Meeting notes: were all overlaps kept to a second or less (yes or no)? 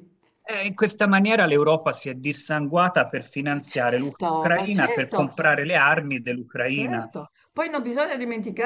no